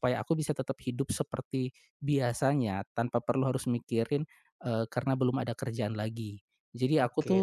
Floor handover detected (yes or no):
yes